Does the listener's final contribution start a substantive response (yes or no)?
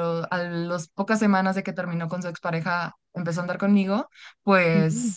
no